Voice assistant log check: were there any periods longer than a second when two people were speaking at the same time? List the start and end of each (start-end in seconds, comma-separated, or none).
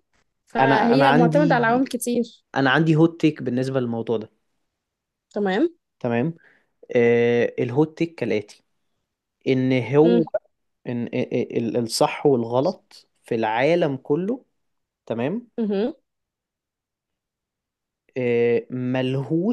0.6-1.9